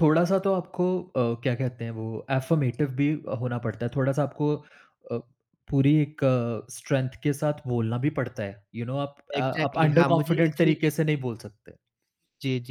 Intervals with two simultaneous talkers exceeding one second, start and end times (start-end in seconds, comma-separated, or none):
9.4-10.7